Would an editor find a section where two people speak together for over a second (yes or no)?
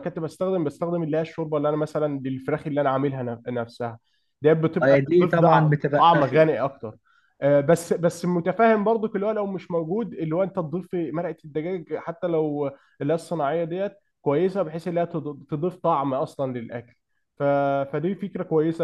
yes